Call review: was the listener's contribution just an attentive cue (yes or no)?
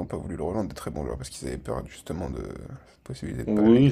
no